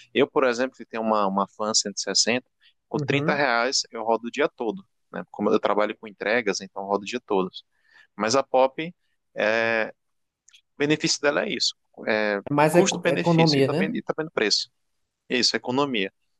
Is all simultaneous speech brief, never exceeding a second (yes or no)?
no